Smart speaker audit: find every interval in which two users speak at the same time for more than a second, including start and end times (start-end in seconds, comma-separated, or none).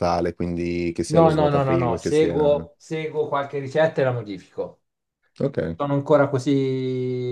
1.1-2.7